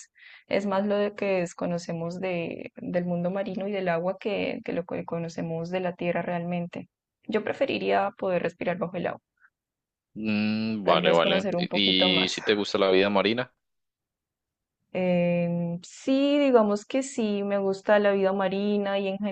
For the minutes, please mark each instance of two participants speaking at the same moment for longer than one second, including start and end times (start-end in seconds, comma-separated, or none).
10.8-12.3